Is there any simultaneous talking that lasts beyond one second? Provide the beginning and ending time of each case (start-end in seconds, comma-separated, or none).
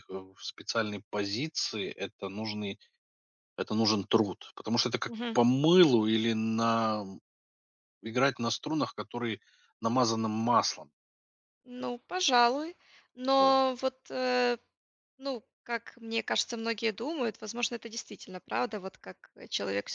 none